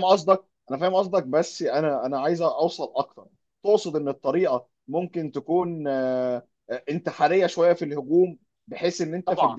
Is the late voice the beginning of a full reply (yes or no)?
no